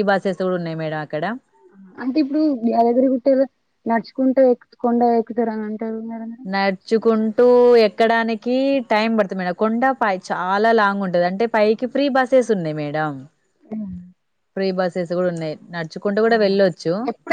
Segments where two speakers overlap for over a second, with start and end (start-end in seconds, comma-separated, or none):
none